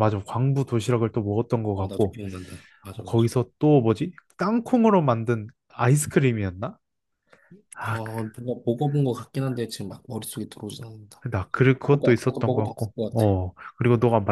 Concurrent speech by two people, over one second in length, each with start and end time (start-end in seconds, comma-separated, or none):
11.8-13.2